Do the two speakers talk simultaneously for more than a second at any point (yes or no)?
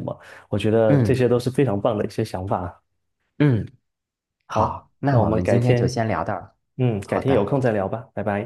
yes